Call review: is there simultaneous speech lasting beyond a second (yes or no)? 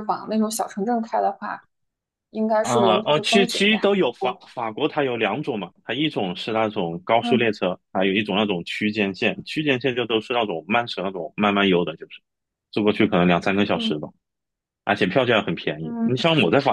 yes